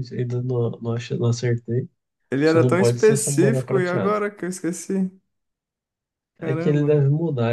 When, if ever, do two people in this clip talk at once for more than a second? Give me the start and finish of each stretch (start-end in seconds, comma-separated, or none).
2.4-4.2